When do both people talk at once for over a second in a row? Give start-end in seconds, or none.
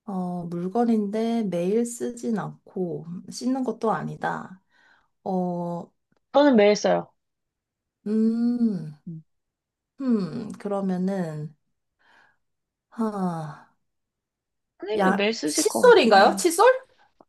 15.0-16.4